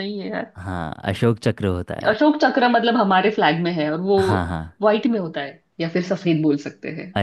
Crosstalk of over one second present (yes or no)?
no